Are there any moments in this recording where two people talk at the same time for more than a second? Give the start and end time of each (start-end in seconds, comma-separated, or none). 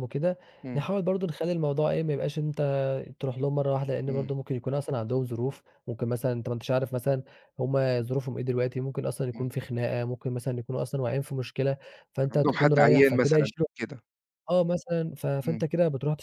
12.3-13.7